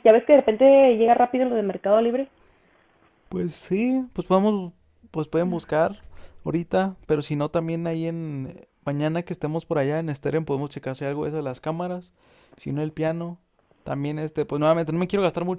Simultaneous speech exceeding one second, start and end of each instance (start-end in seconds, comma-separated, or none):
none